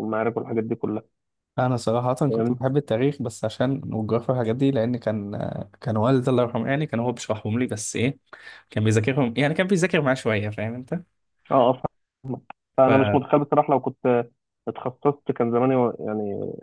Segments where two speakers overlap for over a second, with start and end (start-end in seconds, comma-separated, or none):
none